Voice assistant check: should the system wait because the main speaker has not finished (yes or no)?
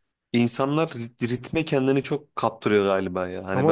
no